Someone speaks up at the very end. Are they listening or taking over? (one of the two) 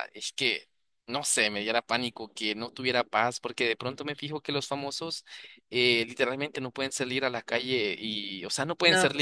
listening